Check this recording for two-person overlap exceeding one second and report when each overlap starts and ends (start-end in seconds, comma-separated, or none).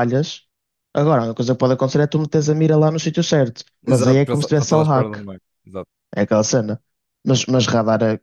3.9-5.2